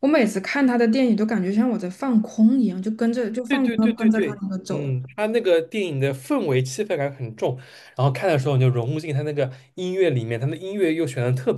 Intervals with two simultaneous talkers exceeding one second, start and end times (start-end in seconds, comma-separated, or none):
3.5-4.9